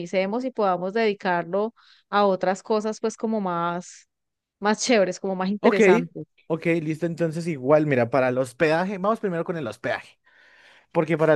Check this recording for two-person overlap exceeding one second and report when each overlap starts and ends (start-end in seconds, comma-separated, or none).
none